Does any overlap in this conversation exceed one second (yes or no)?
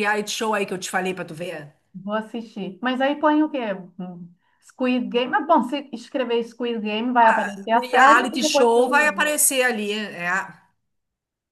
yes